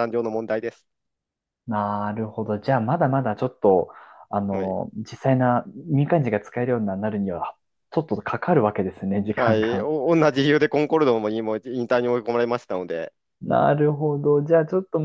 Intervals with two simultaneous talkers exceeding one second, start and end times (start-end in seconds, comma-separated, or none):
none